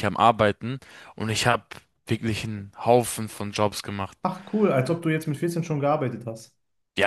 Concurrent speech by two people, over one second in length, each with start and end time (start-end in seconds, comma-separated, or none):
none